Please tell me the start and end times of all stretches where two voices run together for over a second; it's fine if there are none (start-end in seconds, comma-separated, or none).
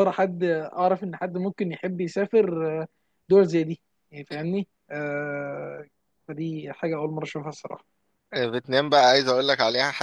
none